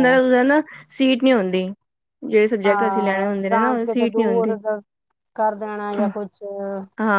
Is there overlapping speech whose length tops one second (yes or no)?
yes